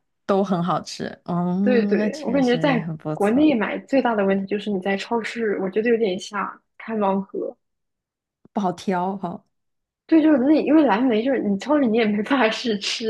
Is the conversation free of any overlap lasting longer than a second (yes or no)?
no